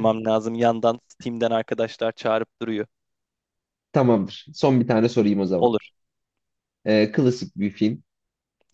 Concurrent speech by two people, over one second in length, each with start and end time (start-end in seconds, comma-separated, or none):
none